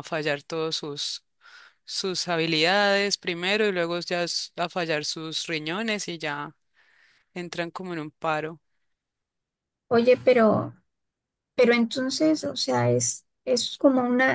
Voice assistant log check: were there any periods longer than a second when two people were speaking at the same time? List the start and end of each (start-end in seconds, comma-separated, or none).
none